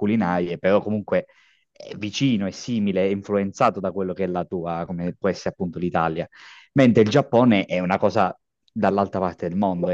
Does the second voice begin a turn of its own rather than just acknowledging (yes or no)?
yes